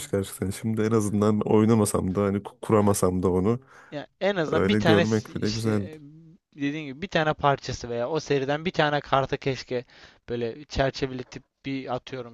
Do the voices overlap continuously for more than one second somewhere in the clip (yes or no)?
yes